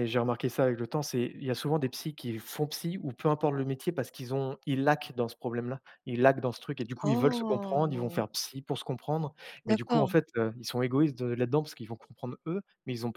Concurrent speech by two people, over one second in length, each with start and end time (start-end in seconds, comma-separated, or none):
7.0-8.2